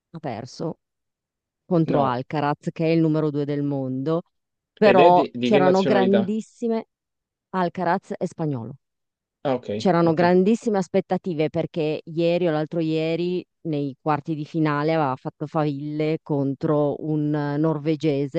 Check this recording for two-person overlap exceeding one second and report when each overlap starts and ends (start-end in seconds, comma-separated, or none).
4.8-6.3